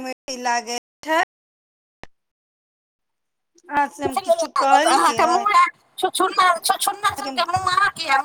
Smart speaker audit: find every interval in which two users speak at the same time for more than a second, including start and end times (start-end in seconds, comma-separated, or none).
4.1-5.5